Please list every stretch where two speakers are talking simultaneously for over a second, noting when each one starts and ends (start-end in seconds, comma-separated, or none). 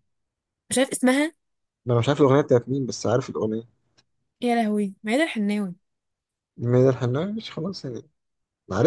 none